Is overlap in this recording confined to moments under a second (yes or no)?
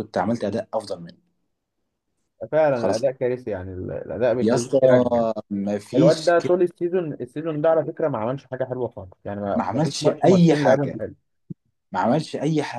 no